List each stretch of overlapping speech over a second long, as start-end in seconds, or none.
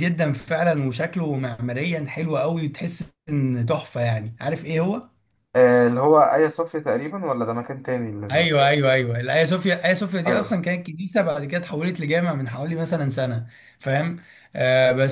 none